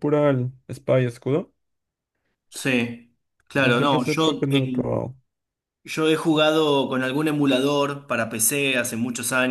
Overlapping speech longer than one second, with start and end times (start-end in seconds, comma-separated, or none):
3.7-5.0